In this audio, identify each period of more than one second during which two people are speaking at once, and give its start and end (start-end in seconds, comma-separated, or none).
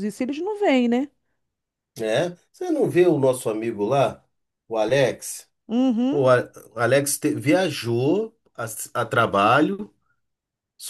none